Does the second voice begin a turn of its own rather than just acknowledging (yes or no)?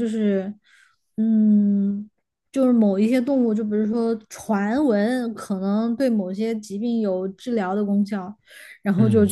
no